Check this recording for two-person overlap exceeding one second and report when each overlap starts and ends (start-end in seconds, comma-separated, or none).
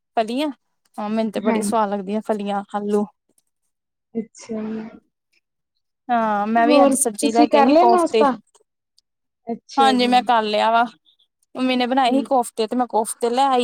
6.7-8.2